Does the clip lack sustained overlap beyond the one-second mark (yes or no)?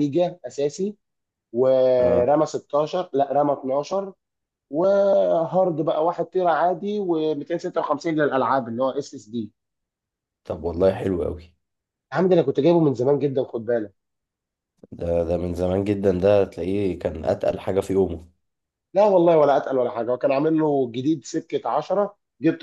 yes